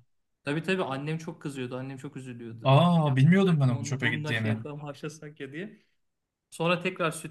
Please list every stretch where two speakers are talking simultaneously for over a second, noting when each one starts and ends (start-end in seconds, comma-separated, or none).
2.6-4.6